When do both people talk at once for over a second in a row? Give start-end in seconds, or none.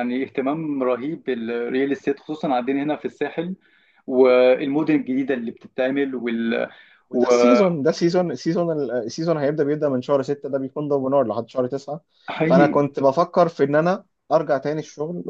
none